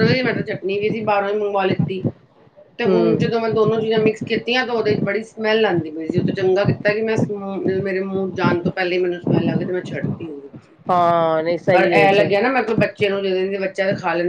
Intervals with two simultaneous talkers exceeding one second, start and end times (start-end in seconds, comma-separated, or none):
none